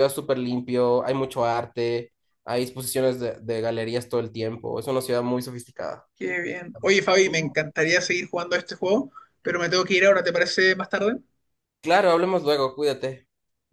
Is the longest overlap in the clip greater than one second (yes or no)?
no